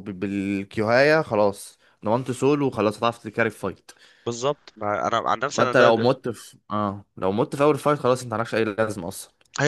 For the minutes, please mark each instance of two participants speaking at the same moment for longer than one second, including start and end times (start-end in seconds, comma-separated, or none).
none